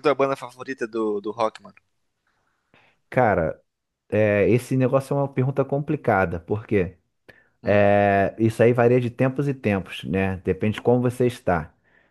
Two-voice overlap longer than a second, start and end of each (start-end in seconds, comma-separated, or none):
none